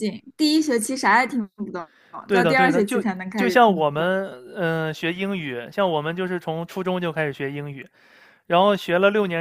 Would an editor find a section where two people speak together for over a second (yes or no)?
yes